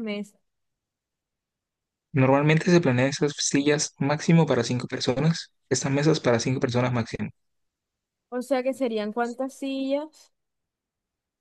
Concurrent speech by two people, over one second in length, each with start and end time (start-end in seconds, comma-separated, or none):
none